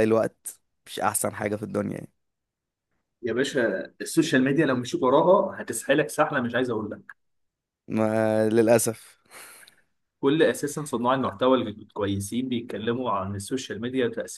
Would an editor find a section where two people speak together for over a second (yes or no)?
no